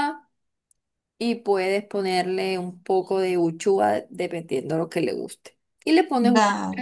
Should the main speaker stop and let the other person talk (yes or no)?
no